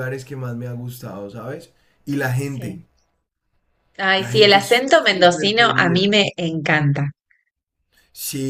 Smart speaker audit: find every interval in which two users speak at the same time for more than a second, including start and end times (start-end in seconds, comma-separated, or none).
4.2-6.1